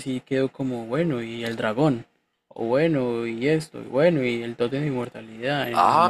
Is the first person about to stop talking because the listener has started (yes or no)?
yes